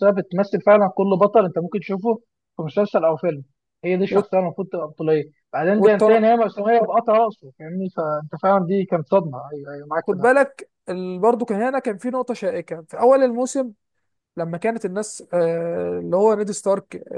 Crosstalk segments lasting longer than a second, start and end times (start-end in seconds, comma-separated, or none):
none